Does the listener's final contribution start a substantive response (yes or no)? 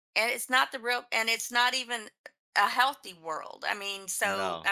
no